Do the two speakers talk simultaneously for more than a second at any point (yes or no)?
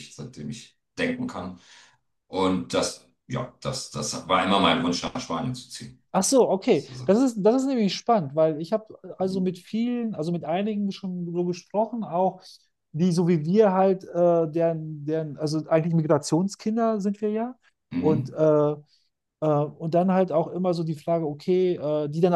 no